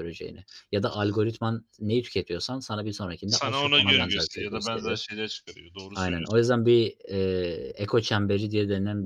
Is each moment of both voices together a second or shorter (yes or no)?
no